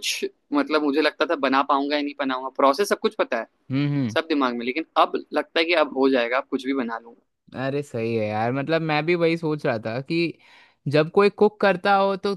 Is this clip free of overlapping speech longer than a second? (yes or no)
yes